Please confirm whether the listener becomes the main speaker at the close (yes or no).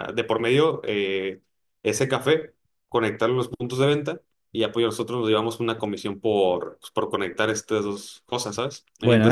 yes